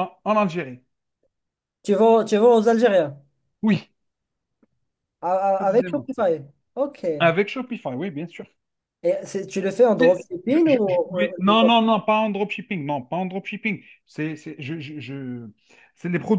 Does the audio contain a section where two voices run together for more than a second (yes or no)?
yes